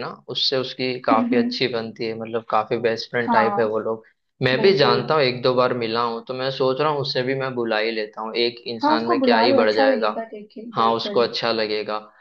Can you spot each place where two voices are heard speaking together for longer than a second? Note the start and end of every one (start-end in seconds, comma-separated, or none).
8.8-10.1